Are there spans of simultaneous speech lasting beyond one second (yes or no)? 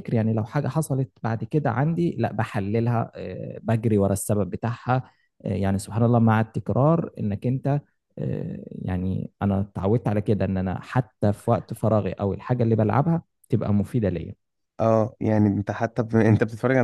no